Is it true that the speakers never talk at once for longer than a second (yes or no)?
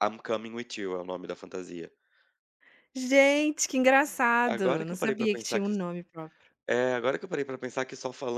no